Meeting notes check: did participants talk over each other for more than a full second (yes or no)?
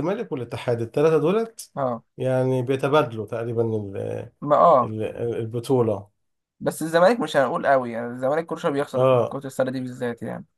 no